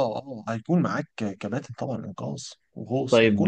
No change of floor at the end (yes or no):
no